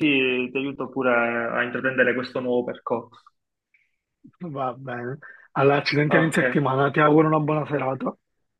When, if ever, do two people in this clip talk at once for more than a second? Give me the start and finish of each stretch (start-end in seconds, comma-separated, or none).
none